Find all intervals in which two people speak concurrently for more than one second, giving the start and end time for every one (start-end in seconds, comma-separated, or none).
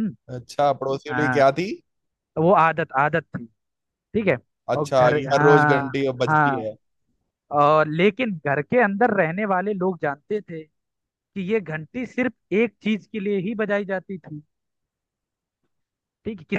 4.8-6.7